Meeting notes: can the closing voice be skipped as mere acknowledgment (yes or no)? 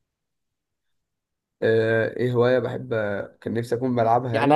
no